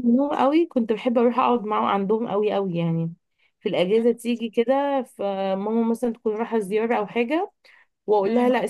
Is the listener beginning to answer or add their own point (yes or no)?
no